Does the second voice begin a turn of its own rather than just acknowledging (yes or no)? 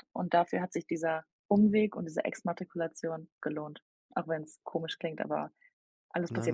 yes